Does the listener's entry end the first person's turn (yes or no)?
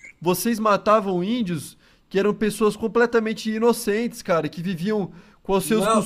yes